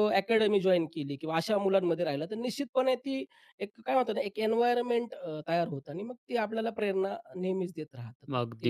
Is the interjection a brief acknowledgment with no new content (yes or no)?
no